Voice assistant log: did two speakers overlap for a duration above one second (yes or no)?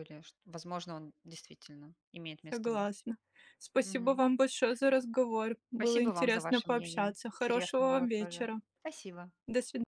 yes